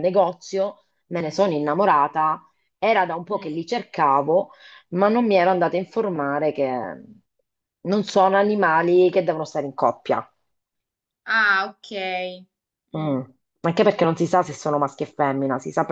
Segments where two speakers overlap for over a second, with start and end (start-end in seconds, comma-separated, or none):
none